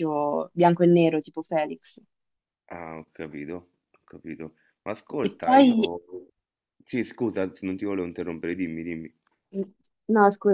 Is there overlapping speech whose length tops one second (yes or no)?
no